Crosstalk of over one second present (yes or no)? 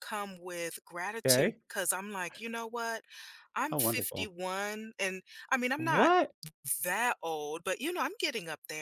no